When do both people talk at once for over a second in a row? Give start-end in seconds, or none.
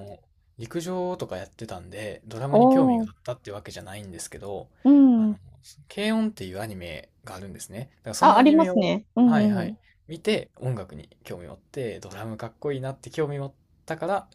8.2-9.8